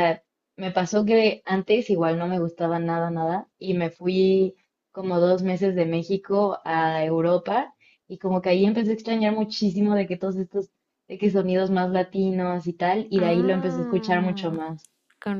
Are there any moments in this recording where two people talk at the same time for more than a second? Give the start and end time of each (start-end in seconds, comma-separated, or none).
13.2-14.6